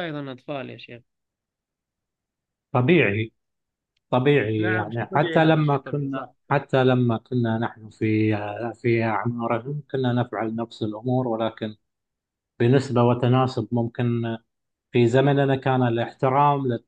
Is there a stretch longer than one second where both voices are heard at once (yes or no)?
yes